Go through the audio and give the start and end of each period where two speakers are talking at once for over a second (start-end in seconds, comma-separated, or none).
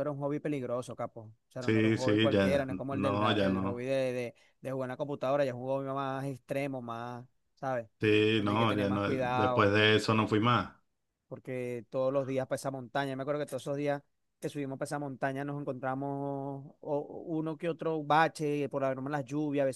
1.6-3.9, 8.4-9.7